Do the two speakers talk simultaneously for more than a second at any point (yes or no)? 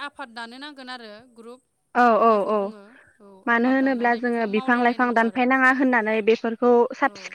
yes